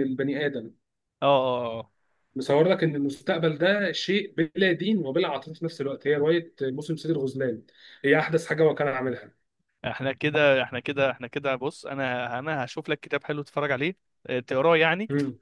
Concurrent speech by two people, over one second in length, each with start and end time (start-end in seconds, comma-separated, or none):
none